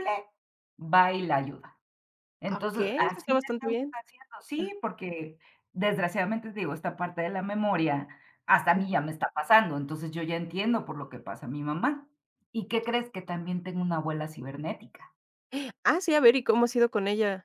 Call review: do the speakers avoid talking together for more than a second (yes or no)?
no